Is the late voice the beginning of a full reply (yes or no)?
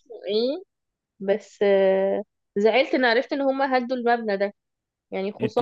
yes